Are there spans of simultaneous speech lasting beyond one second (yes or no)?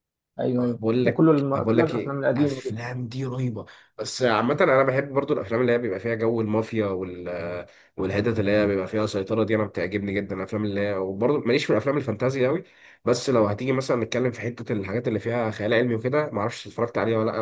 yes